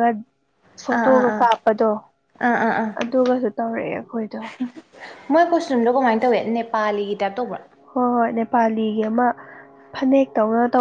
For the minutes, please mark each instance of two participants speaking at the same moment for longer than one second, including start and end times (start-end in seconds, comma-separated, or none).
none